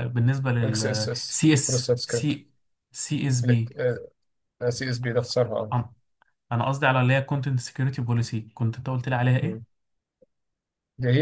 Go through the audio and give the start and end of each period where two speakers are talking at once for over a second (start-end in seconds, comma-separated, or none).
0.6-2.3